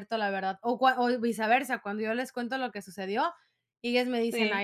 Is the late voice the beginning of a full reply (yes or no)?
no